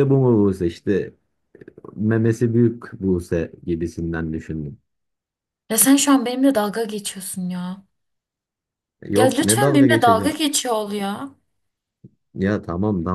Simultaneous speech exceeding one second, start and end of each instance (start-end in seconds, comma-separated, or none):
9.2-10.4